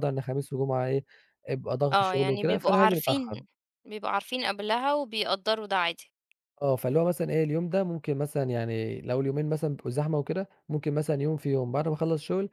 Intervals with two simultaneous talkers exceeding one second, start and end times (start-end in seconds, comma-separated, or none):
1.9-3.4